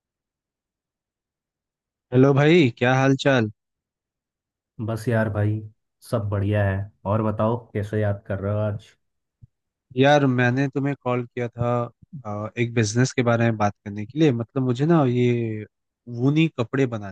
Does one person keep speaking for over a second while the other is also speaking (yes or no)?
no